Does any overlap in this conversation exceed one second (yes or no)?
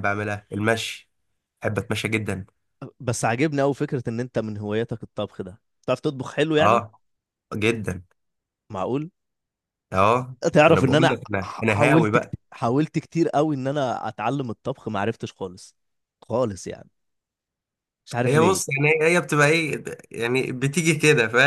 yes